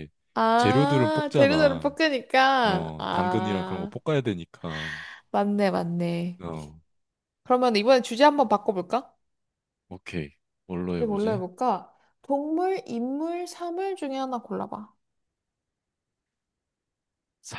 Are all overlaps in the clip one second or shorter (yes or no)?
no